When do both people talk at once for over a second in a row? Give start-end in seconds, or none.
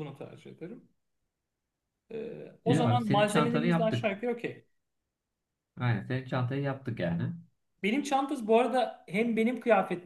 2.6-4.2